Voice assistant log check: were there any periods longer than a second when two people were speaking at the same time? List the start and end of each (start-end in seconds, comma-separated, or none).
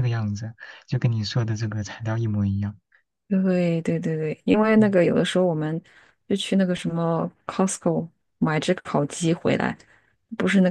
none